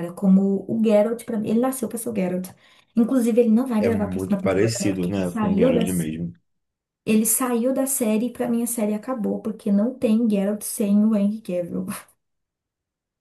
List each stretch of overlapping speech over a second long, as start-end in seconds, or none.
3.8-6.1